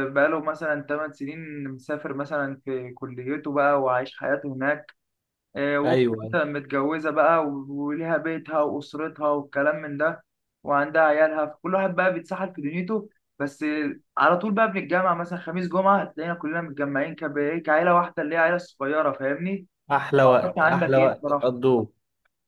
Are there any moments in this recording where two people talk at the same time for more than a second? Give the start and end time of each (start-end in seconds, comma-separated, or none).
20.2-21.6